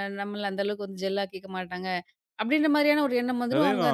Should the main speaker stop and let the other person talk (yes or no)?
yes